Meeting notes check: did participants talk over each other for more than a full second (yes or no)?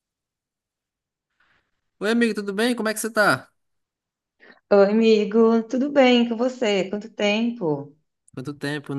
no